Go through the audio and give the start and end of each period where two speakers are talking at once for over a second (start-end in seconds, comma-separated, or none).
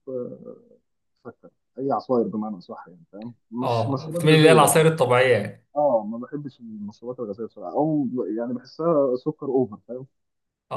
3.6-4.9